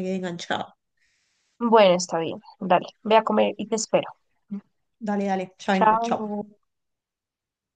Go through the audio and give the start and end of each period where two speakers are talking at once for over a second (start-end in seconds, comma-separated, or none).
none